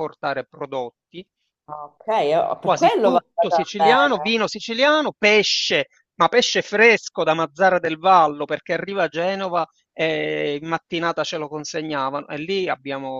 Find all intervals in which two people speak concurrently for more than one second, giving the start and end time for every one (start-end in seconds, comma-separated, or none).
2.6-4.4